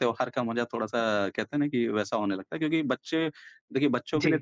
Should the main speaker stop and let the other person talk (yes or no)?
no